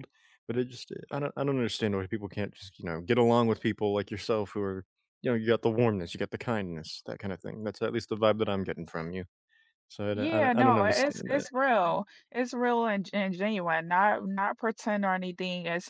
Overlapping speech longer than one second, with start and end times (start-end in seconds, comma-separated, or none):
10.1-11.5